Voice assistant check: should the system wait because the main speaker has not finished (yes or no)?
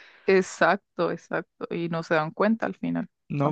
no